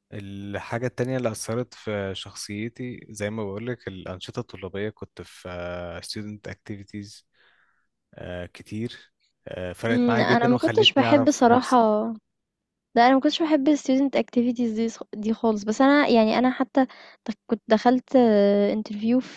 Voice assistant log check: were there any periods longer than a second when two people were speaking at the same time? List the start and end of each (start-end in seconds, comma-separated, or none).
9.9-11.8